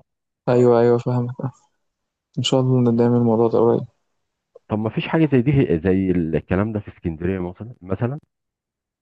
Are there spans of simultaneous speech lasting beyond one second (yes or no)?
no